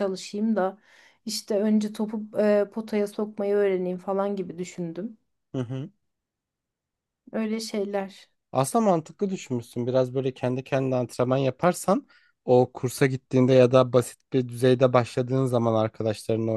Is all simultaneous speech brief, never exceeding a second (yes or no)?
yes